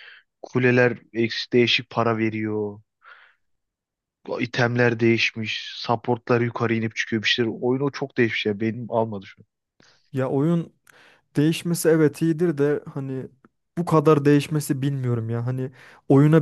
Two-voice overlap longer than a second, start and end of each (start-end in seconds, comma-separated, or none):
none